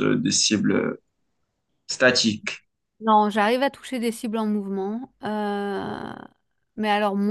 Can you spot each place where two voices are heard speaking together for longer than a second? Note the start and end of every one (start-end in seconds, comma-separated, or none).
none